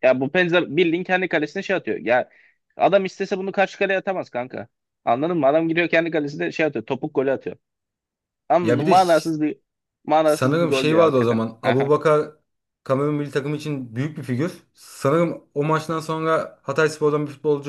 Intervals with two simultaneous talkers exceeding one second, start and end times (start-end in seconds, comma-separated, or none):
10.2-11.9